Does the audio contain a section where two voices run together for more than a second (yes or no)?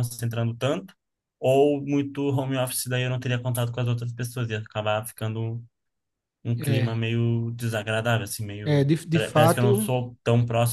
yes